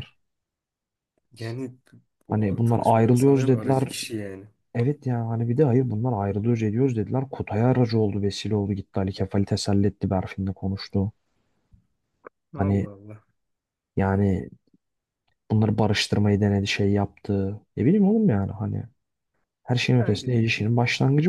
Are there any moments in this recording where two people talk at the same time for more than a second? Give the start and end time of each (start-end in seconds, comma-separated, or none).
2.3-3.9